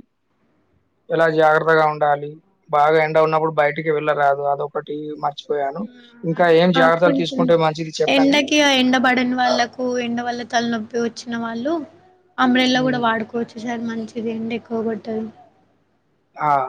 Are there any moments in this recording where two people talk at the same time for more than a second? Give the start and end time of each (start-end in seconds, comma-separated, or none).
none